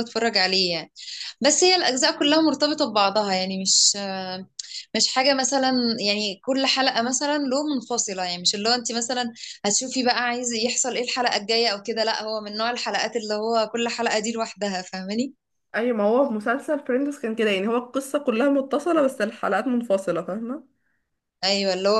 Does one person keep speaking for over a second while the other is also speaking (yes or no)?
no